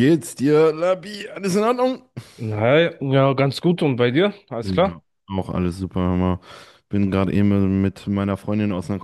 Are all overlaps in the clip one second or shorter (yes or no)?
yes